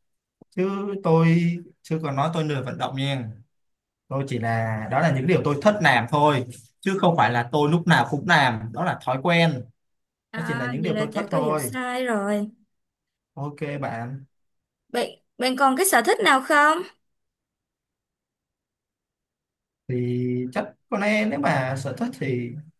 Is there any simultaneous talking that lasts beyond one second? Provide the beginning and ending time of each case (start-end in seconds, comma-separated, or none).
10.3-11.7